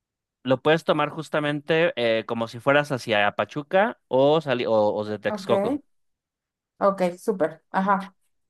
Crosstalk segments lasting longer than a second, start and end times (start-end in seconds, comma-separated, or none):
none